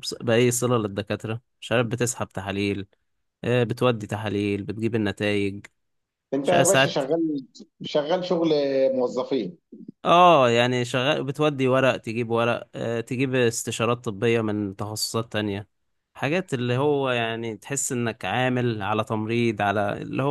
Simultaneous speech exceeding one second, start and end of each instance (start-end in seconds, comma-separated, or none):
none